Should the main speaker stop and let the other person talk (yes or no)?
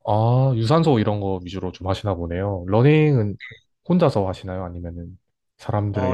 yes